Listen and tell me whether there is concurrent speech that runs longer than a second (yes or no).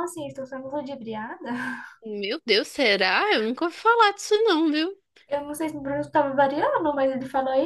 no